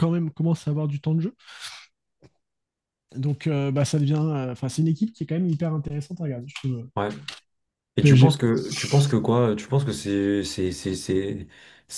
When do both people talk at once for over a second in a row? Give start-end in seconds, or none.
none